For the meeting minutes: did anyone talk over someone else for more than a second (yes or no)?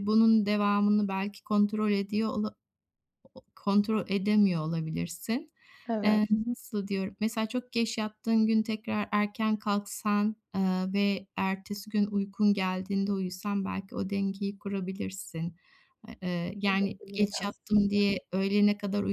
yes